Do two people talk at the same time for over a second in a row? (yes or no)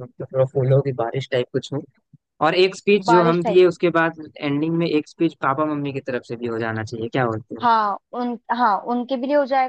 no